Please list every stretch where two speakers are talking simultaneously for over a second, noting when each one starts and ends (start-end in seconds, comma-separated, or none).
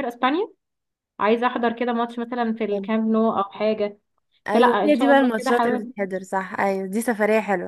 4.5-5.9